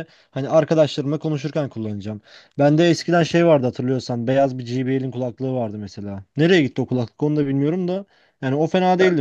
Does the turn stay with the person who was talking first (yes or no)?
yes